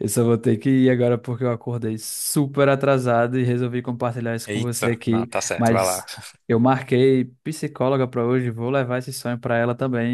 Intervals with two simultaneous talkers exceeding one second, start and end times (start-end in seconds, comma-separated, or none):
4.5-6.0